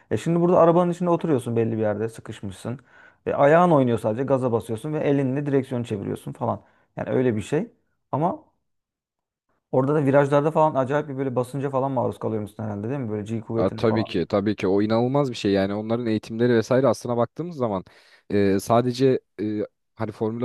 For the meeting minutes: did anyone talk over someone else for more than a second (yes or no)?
no